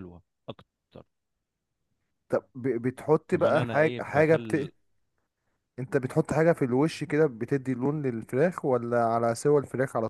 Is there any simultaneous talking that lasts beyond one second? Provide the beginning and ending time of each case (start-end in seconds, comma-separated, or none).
3.3-4.7